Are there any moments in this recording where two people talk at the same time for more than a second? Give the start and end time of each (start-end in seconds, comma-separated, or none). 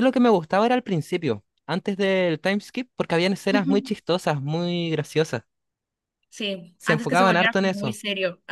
6.8-8.0